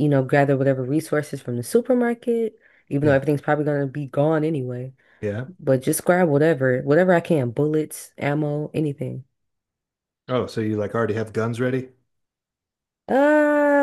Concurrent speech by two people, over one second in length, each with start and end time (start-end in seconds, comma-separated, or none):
none